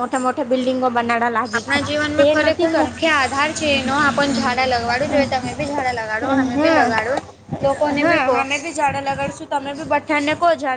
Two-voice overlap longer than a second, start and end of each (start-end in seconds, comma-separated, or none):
none